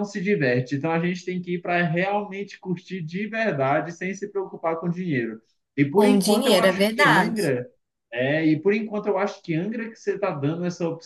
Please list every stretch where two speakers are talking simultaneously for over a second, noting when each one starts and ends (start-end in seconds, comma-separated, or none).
5.9-7.5